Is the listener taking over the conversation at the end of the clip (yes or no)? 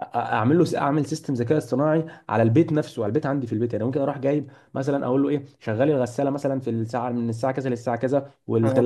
no